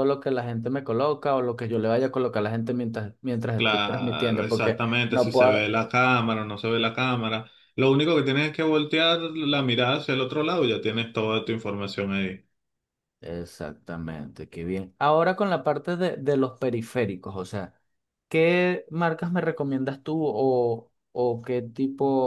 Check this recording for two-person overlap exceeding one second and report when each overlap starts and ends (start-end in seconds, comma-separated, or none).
3.5-5.7